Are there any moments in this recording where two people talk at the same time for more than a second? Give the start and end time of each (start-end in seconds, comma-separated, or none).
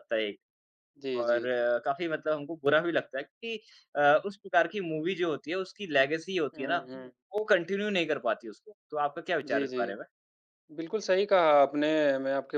none